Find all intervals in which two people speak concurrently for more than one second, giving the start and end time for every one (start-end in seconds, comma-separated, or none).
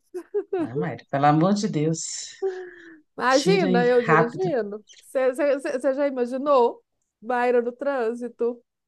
3.3-4.5